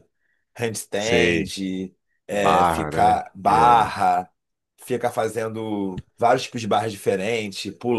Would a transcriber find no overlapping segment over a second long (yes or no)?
no